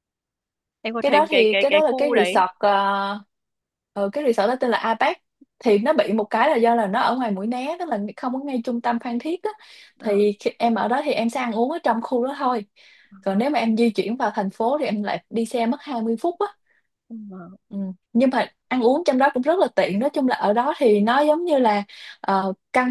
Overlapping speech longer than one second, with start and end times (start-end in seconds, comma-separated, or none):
1.0-2.4